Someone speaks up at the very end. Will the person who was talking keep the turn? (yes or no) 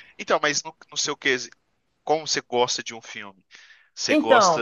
yes